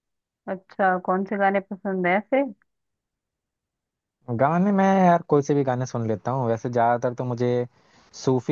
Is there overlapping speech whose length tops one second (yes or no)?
no